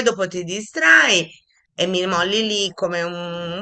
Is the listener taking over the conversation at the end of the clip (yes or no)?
no